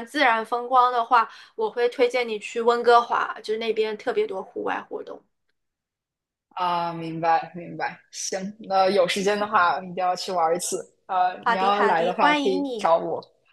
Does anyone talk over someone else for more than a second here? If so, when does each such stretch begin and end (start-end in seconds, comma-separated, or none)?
11.4-12.9